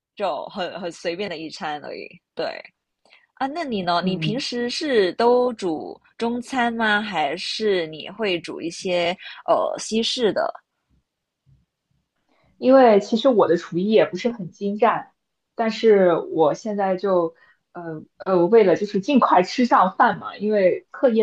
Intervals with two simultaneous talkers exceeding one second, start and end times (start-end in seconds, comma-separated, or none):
none